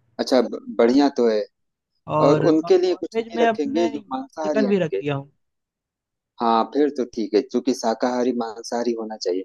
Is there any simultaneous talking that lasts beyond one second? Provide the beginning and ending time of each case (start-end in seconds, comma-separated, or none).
2.3-5.0